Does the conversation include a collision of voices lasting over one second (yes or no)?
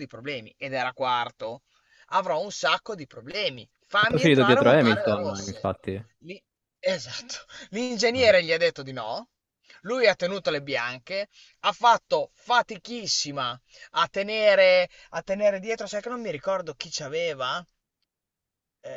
yes